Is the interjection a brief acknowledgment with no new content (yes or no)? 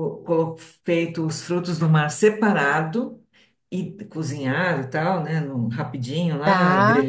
yes